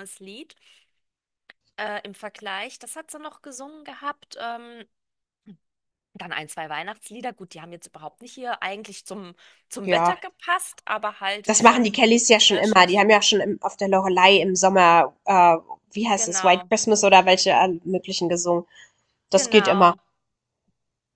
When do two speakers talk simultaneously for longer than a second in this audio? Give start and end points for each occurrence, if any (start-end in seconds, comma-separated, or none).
11.5-13.1